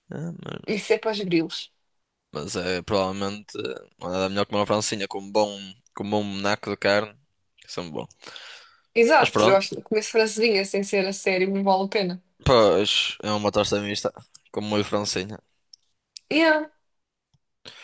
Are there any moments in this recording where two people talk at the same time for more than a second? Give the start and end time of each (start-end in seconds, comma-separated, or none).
none